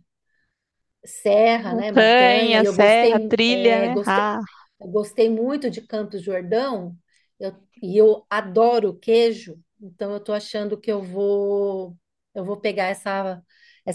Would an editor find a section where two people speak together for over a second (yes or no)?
yes